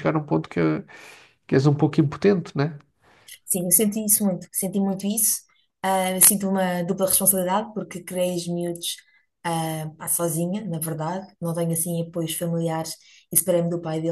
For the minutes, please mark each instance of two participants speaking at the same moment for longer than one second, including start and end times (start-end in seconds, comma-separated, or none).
none